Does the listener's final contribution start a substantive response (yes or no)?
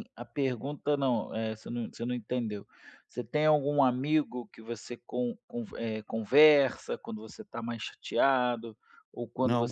no